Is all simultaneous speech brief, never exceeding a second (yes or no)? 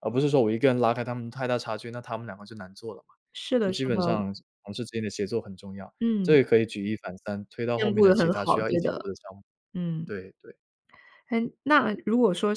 no